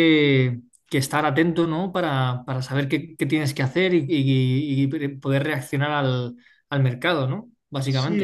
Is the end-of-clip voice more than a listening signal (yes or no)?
yes